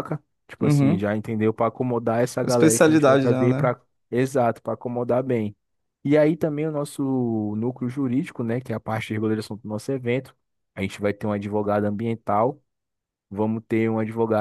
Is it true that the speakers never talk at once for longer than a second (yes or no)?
no